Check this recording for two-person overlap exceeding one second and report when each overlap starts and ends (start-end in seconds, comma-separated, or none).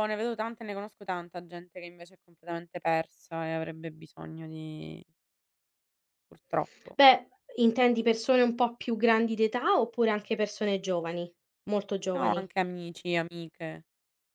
none